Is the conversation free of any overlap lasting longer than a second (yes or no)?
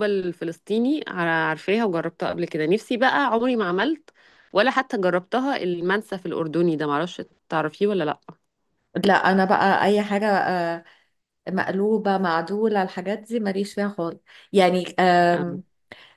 yes